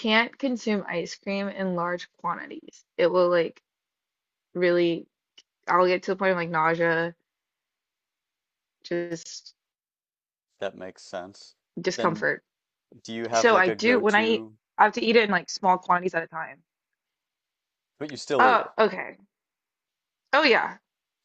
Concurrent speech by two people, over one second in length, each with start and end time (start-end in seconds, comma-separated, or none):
13.3-14.6